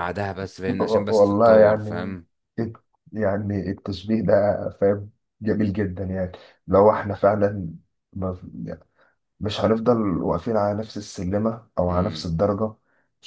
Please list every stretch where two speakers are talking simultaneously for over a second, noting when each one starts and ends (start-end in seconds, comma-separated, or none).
0.8-2.1